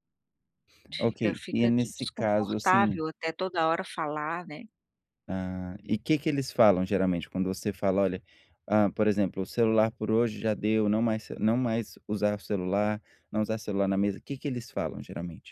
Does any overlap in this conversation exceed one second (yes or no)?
yes